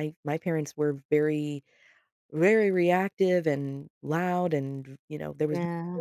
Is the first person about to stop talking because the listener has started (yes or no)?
no